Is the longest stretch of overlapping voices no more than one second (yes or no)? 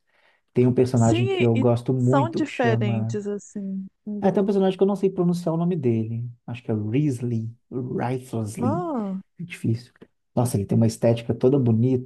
no